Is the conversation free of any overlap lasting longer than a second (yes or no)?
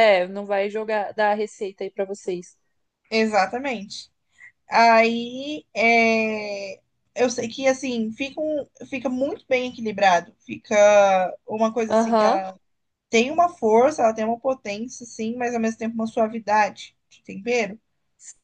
yes